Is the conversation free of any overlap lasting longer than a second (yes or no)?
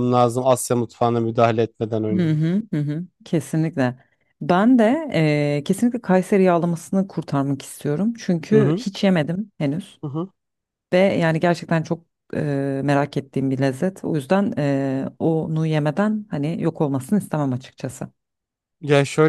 yes